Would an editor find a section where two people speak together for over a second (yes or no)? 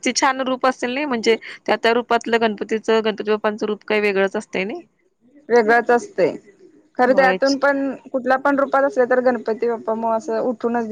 no